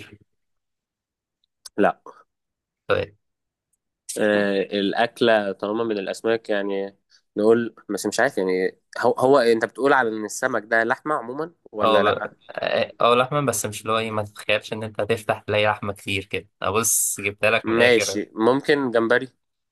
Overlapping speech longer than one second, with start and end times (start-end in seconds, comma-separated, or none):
none